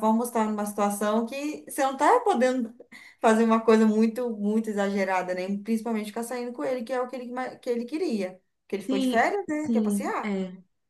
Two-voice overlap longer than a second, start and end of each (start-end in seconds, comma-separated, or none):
8.9-10.3